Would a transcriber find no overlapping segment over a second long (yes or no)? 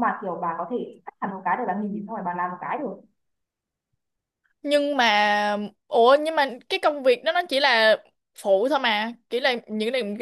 yes